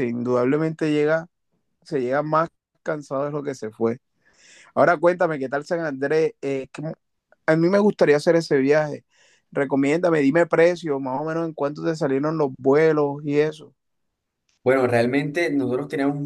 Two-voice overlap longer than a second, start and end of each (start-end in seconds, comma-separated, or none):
none